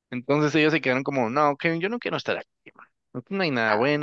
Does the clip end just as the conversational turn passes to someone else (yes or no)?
no